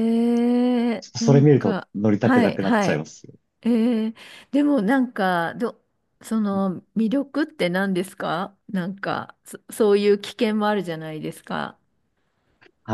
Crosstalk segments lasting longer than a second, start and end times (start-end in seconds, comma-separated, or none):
1.0-3.1